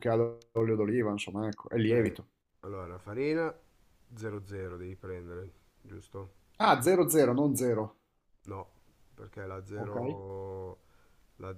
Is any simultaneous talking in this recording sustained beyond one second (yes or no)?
no